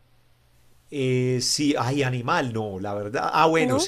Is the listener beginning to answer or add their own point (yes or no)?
no